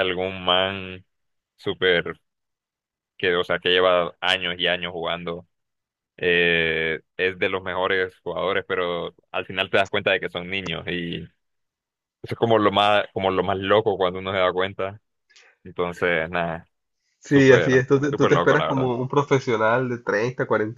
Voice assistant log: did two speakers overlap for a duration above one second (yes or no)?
yes